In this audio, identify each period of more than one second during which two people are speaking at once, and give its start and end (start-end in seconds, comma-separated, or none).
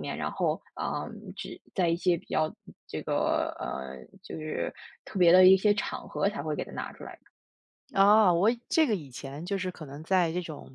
none